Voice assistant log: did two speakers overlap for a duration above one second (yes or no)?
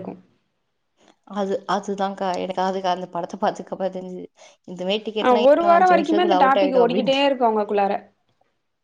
yes